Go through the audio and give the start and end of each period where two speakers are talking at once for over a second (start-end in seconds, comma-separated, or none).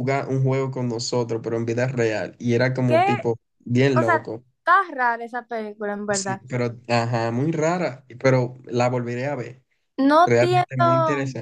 none